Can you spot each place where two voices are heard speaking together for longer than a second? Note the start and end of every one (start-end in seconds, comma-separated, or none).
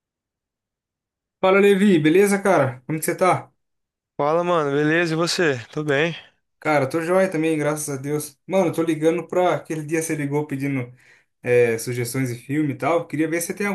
none